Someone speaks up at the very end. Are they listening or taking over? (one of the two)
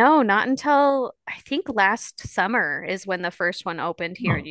listening